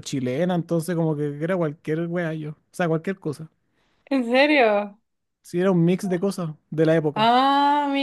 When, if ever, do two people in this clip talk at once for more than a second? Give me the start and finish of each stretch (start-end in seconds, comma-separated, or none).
none